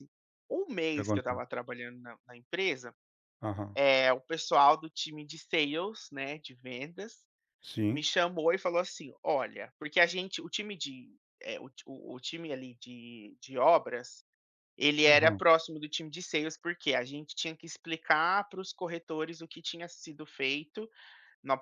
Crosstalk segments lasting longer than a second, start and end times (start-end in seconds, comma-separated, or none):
none